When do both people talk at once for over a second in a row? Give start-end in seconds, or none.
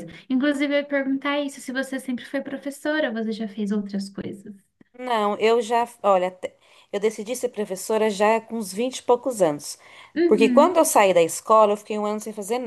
none